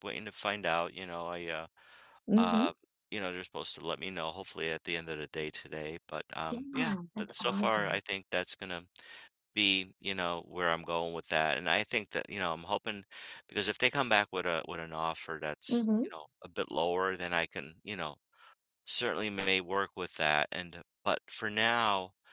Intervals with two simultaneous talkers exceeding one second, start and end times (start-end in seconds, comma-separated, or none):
6.5-8.0